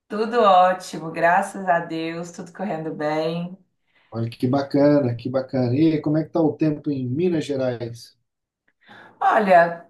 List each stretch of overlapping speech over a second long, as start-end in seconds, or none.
none